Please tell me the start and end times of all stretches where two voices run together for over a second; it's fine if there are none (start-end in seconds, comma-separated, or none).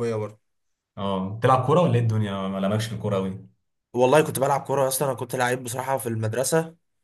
none